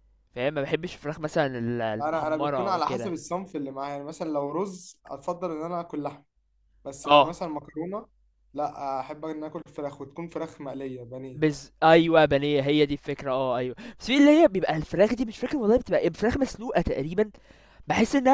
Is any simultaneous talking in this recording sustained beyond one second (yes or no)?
yes